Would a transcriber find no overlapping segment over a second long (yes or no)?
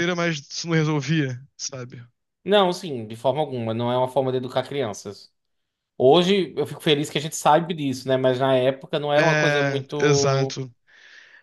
no